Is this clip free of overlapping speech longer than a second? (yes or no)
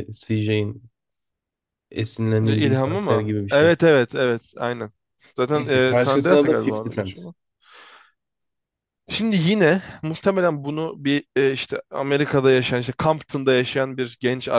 no